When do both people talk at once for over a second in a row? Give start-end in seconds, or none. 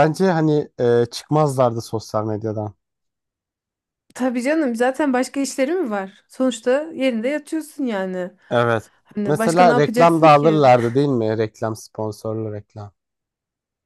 9.3-10.6